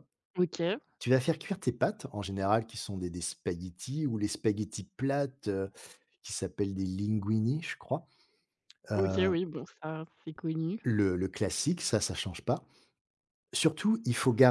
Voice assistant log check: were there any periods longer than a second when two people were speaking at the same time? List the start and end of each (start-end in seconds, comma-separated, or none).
none